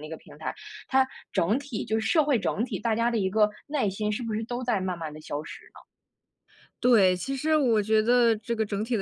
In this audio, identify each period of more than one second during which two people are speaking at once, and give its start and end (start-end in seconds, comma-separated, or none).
none